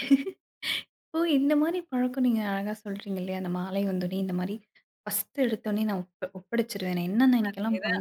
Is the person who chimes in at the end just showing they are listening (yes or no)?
yes